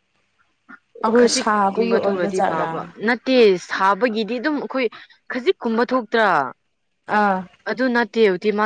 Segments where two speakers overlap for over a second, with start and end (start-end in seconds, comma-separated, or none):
1.2-2.7